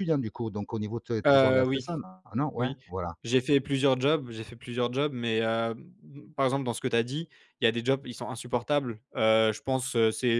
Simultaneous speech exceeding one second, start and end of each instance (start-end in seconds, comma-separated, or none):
none